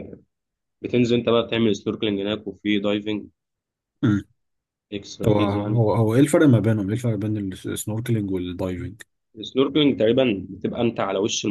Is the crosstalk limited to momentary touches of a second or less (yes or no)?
yes